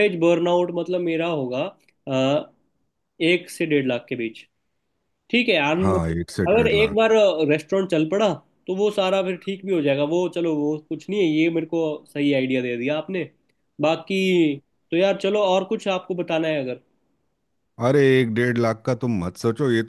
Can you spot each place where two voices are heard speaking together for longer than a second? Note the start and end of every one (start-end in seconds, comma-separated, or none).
5.8-7.1